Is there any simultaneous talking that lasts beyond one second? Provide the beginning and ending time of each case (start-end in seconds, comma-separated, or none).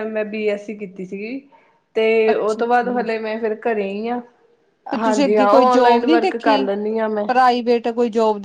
none